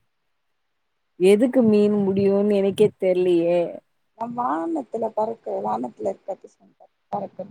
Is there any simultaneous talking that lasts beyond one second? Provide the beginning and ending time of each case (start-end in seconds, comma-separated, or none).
none